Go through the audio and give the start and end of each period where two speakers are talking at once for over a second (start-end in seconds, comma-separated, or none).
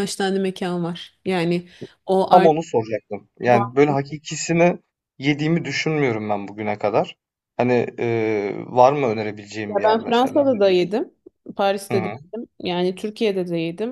9.7-10.9